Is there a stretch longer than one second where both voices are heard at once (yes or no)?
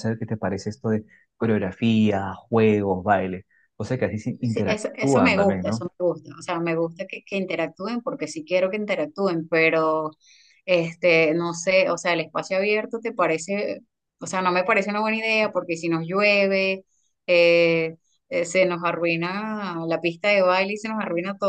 yes